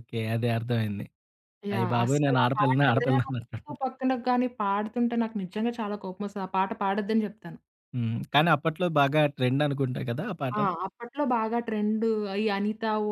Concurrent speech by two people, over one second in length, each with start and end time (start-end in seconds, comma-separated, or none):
1.7-3.6